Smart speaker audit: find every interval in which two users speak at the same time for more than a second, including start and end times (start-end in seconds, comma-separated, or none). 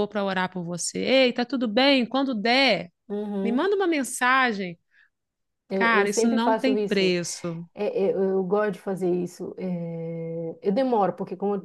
5.7-7.2